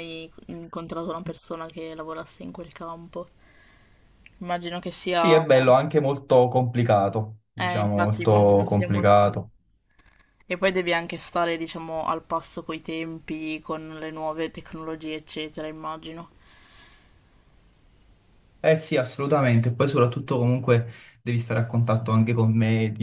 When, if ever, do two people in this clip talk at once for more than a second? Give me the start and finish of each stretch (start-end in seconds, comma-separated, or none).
7.5-9.2